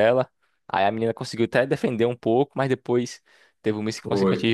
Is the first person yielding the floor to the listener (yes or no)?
no